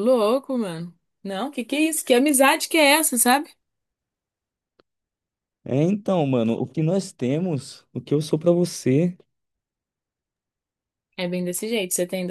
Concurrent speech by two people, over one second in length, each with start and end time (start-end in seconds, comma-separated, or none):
none